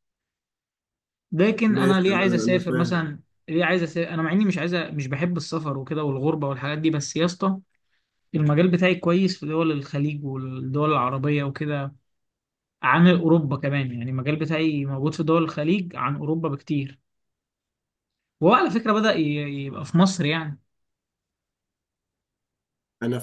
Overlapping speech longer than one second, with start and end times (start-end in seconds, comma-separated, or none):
1.7-3.1